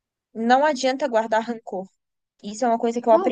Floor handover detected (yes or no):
yes